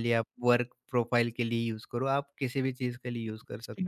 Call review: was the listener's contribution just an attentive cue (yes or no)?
no